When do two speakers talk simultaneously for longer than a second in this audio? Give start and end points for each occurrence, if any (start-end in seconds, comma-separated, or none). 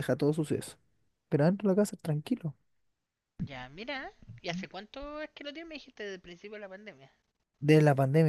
none